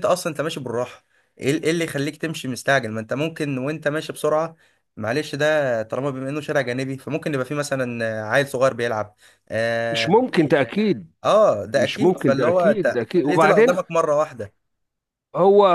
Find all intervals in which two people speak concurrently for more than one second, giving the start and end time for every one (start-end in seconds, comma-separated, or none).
11.8-13.8